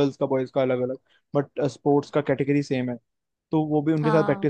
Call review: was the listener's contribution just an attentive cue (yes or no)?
yes